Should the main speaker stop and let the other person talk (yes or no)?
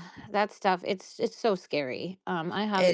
no